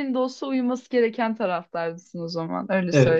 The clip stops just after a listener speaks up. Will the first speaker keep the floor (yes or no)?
no